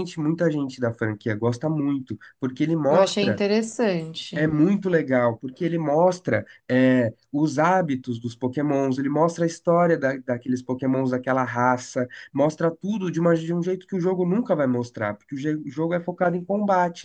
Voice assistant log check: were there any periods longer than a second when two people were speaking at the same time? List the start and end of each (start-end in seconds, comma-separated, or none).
none